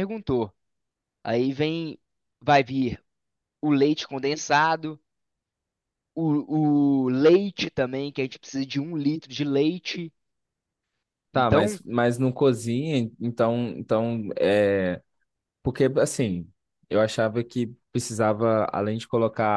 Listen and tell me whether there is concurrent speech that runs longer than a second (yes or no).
no